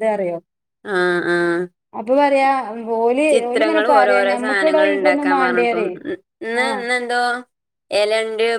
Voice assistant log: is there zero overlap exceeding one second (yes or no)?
no